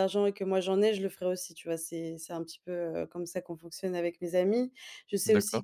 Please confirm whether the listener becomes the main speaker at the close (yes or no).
no